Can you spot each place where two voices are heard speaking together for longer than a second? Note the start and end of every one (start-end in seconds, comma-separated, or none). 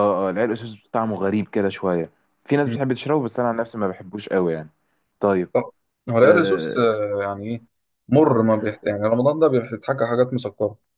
none